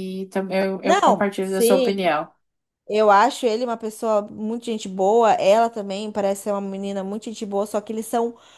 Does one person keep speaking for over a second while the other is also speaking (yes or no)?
yes